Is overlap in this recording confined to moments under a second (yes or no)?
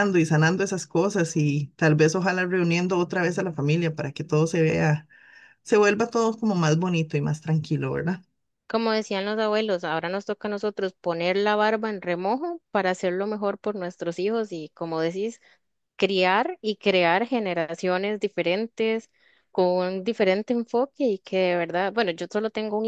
yes